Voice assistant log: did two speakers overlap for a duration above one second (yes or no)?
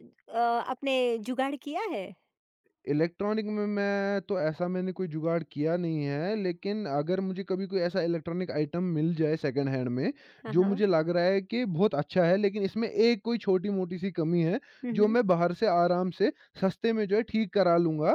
no